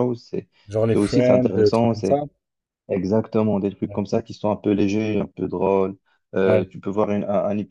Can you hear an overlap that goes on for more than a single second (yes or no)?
yes